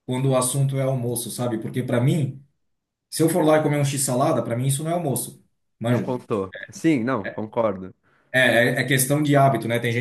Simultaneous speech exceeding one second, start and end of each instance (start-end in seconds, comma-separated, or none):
none